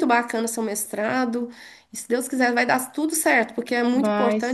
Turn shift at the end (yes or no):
no